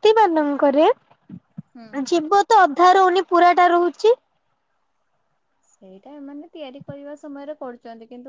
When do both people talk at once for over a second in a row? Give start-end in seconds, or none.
none